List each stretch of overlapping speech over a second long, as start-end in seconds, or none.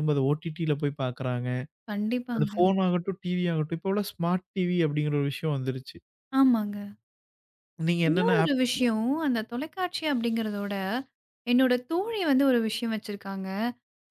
none